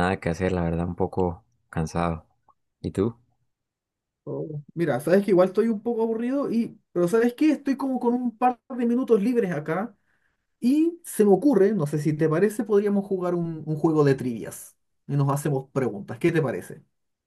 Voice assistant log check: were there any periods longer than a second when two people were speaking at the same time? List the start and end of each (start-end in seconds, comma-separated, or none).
none